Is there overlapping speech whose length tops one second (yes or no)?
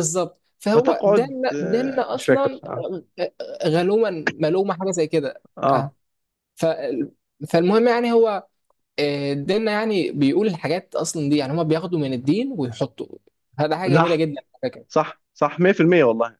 yes